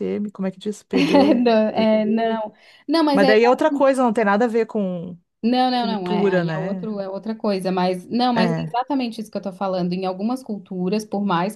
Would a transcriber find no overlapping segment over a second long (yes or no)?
no